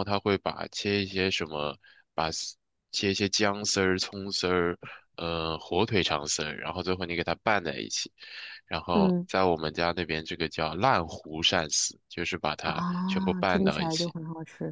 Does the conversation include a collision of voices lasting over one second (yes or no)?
yes